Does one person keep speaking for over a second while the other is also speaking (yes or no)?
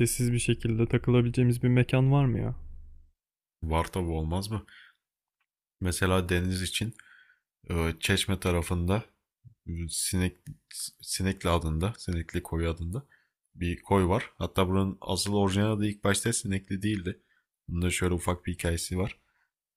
no